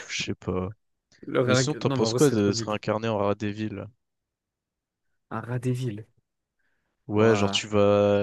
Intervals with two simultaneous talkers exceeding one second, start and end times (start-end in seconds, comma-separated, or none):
1.4-2.8